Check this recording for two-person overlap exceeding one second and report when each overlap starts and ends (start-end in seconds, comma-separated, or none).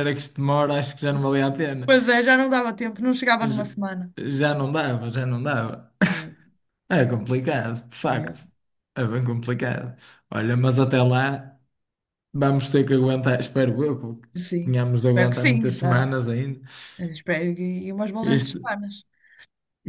14.3-16.1